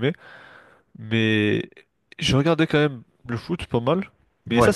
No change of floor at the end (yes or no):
yes